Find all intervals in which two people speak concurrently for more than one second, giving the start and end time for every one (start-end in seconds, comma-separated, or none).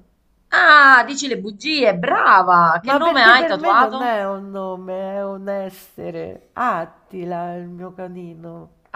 2.9-4.1